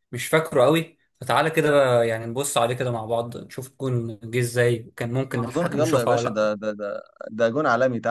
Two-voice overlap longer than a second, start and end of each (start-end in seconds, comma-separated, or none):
5.3-6.6